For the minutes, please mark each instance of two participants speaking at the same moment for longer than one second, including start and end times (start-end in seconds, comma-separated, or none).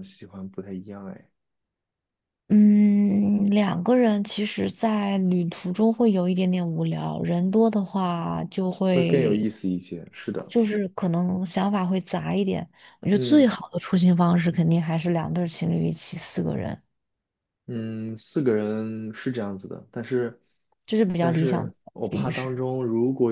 21.2-22.6